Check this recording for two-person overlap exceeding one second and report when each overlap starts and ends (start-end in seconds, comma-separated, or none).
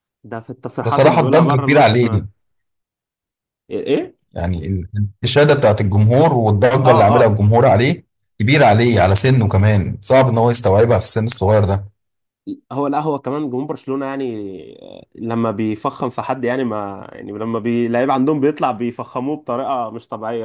0.8-2.1